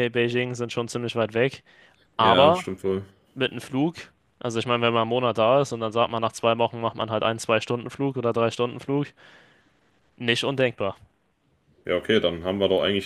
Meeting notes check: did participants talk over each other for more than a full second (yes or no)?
no